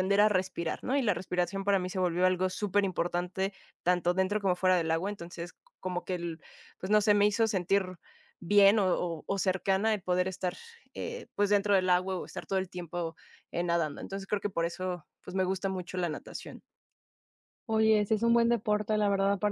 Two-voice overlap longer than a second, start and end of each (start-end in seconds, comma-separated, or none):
none